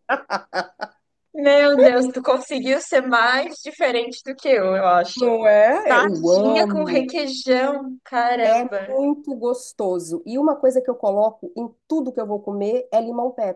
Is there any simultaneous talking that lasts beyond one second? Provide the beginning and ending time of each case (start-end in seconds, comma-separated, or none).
5.7-7.1